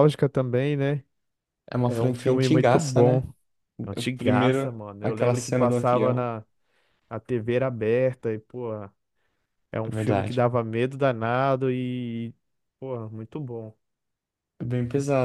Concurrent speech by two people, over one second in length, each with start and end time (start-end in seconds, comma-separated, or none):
1.8-3.2, 4.0-6.3